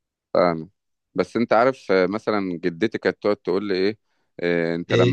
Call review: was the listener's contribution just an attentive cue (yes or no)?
yes